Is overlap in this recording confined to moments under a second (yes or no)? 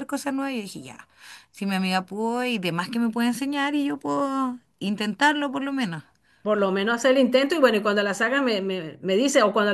yes